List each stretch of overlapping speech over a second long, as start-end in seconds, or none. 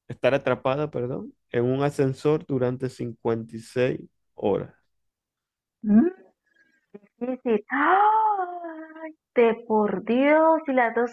none